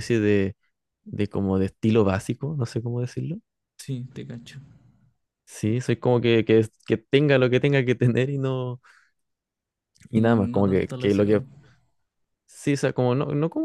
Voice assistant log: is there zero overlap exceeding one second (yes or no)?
no